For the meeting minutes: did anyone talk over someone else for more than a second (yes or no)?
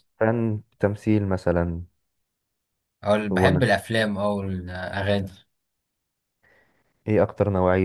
no